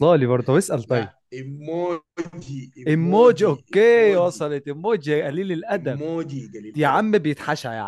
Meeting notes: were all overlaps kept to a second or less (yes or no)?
no